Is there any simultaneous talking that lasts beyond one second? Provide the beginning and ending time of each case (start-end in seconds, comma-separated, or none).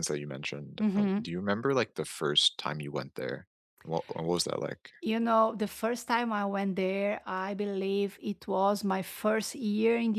none